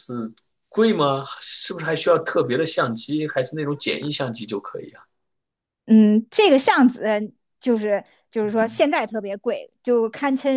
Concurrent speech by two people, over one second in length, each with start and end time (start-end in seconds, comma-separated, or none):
none